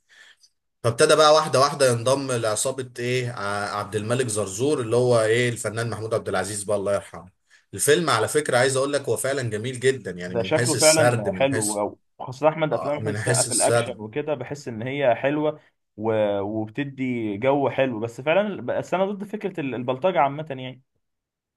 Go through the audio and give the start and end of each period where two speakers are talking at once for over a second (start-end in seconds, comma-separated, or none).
10.3-11.8, 12.7-14.0